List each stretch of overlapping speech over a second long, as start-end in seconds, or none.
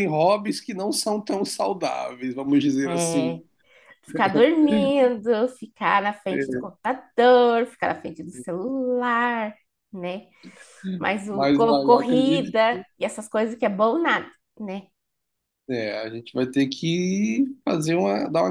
11.2-12.5